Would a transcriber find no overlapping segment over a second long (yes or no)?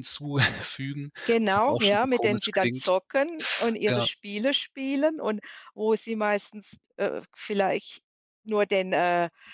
no